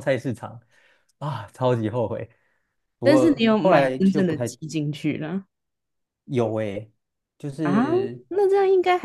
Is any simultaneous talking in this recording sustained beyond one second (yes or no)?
yes